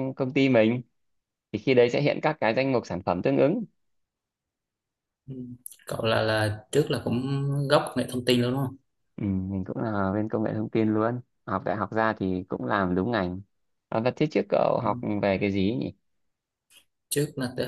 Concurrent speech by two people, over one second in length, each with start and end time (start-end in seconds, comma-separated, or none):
none